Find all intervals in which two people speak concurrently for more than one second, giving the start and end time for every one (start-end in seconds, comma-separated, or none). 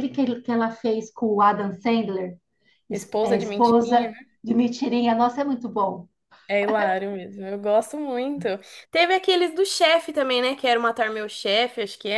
2.9-4.1